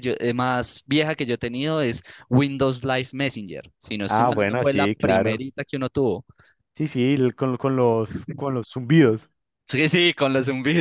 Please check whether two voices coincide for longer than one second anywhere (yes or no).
yes